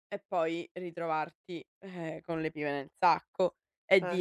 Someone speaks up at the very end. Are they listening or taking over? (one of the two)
listening